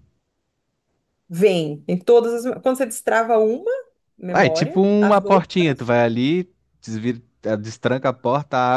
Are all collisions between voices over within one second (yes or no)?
no